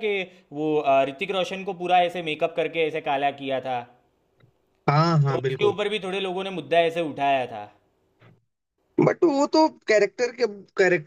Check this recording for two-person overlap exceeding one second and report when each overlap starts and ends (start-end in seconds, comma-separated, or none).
none